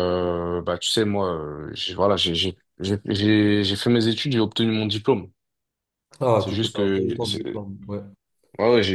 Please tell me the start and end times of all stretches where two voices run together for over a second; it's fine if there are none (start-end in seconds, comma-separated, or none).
6.4-7.6